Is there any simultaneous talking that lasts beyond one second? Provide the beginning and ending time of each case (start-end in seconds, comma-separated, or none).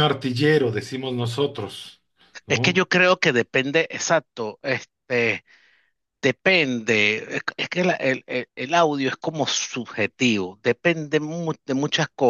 none